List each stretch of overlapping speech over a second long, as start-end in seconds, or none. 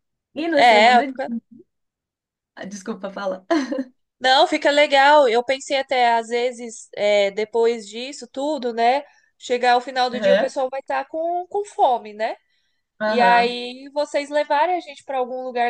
none